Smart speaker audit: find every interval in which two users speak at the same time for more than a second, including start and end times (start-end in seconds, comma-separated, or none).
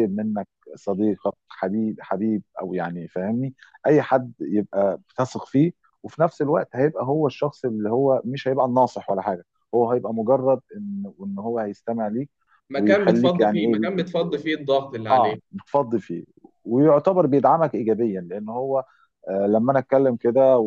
12.7-14.1